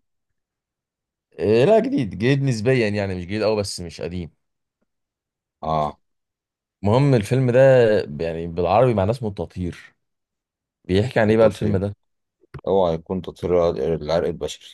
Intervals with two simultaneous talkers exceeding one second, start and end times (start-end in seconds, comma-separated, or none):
none